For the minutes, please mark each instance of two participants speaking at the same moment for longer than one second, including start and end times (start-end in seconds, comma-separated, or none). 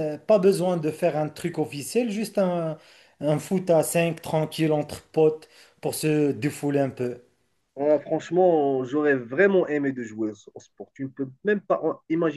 none